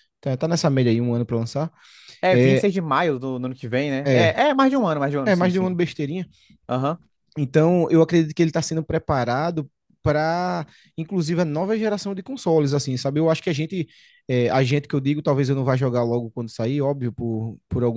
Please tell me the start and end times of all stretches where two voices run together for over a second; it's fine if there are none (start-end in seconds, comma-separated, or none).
none